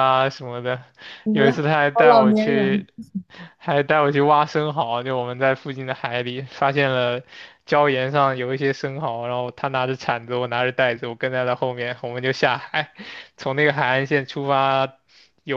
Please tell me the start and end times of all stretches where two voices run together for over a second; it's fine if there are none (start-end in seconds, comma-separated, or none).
1.3-2.9